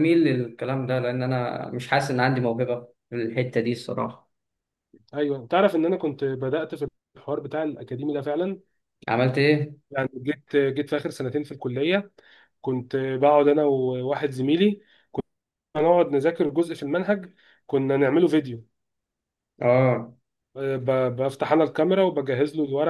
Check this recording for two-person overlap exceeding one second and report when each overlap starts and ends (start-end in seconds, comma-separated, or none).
none